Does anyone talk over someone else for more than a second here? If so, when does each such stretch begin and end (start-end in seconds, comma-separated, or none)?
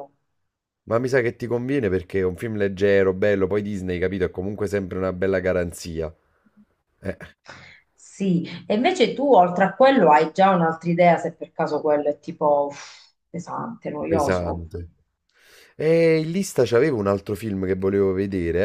none